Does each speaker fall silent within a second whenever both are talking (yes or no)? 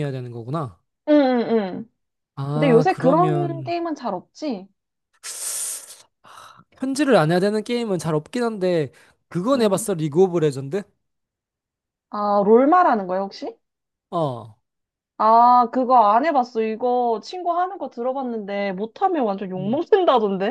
no